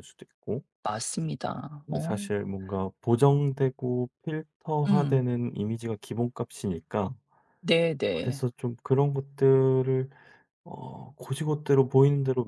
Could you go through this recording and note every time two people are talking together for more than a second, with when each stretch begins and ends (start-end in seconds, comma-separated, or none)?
none